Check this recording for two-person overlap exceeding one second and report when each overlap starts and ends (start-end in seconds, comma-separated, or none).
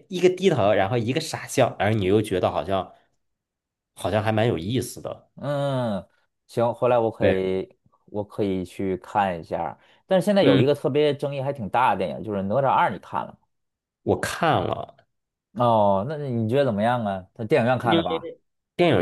none